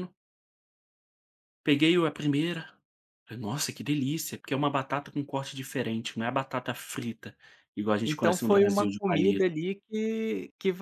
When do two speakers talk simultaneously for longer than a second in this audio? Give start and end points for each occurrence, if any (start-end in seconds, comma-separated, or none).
8.0-9.5